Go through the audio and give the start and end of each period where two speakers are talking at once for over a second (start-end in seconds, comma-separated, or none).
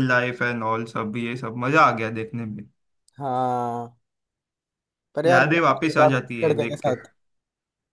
5.2-6.9